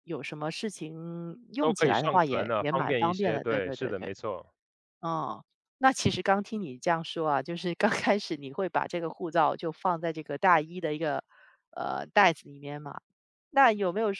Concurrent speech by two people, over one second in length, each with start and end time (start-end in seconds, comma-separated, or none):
1.6-4.1